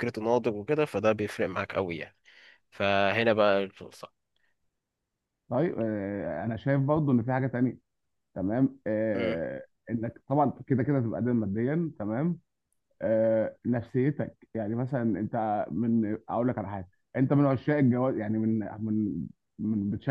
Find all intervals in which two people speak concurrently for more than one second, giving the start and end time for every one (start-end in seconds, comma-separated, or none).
none